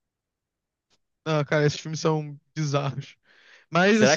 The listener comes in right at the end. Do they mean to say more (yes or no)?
yes